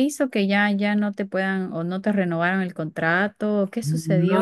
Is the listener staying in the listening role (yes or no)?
no